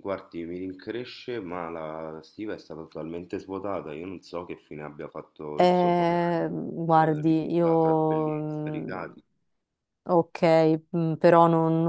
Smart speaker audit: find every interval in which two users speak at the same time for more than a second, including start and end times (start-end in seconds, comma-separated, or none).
5.5-9.0